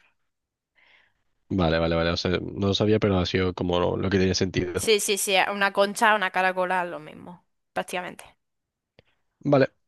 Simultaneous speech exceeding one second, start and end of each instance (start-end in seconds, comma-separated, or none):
none